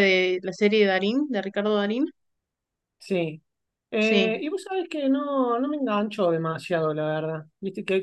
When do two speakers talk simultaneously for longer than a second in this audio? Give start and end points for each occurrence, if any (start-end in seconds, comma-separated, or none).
none